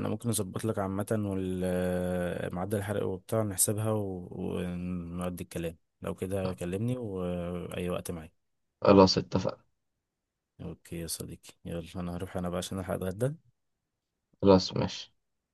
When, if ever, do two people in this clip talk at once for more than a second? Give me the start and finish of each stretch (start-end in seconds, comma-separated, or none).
none